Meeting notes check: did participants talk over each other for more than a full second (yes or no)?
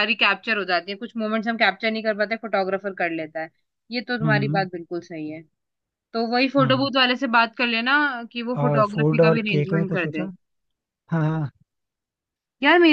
yes